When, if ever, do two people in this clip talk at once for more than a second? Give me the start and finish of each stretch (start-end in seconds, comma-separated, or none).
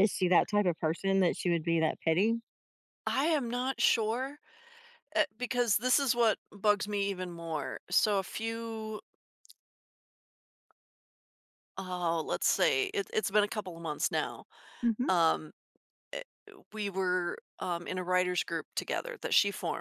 none